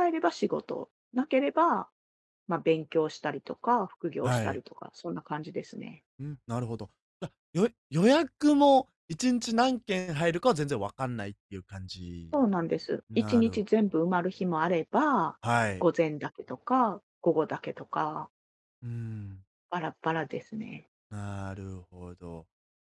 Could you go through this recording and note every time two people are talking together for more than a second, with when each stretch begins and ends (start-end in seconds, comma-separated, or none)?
12.3-14.5